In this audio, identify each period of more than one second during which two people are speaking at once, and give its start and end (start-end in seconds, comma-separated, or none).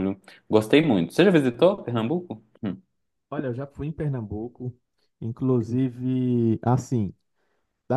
none